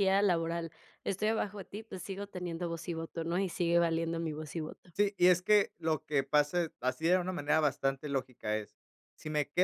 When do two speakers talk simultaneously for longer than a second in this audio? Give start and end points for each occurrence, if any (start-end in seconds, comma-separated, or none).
none